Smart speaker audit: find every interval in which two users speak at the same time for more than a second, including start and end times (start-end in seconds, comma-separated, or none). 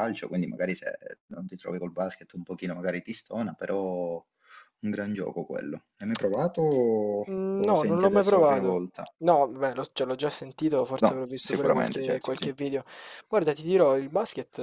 7.3-8.8, 11.0-12.5